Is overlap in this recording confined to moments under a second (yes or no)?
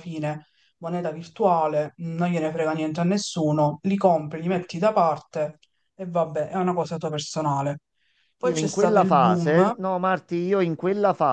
no